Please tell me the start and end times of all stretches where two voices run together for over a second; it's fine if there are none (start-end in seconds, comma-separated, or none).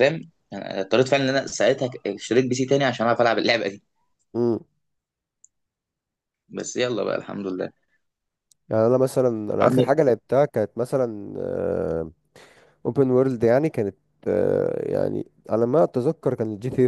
none